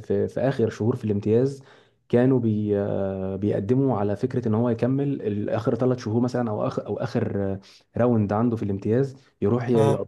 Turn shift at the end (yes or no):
no